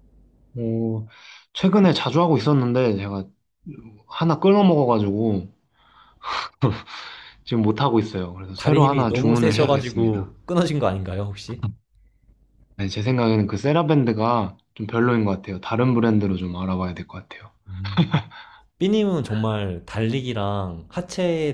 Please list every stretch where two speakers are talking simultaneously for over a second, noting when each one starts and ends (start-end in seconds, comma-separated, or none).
8.6-10.3